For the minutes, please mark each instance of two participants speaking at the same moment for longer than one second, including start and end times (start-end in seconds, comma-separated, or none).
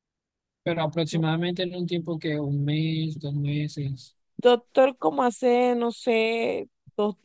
none